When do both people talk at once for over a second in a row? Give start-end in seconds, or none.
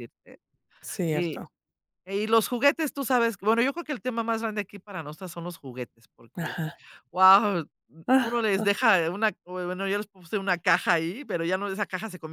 none